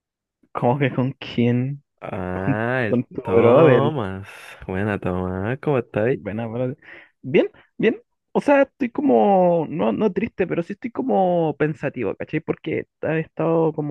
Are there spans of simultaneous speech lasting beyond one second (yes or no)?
yes